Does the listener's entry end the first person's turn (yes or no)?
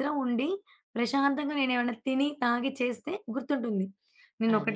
yes